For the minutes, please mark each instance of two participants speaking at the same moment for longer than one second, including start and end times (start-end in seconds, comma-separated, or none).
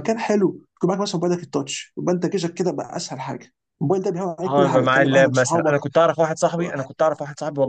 4.5-5.9